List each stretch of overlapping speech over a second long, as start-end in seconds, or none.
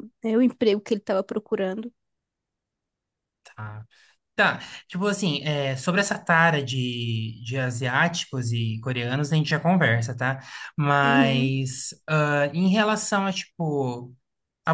none